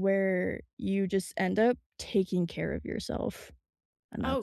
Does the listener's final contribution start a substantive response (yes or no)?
yes